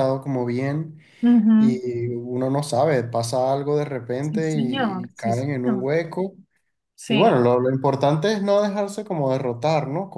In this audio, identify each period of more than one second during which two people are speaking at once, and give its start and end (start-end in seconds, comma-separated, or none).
4.2-5.9